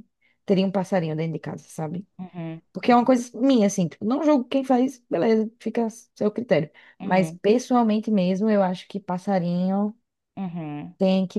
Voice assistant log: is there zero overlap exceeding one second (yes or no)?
yes